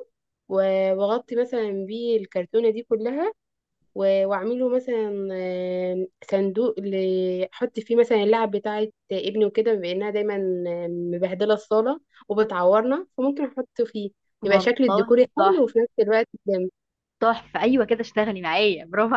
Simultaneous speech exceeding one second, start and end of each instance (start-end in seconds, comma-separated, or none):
14.4-15.7